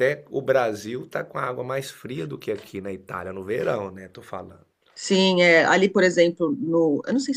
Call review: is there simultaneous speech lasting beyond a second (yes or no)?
no